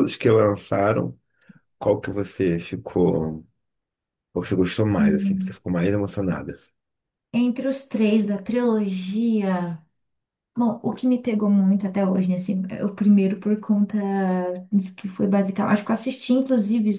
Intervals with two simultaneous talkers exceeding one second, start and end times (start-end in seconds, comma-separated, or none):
none